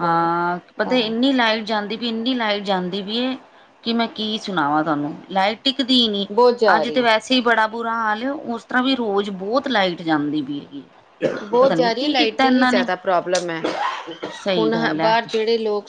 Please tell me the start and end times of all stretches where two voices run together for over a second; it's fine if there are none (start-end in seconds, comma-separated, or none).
11.6-12.9